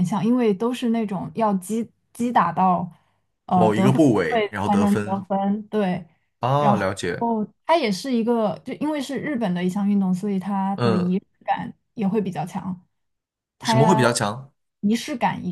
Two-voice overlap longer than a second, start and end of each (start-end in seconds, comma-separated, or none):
3.5-5.2